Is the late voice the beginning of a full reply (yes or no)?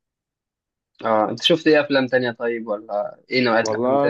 yes